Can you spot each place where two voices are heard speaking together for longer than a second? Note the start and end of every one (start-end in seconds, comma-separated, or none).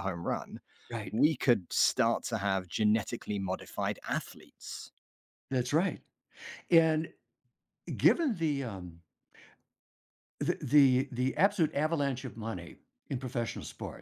none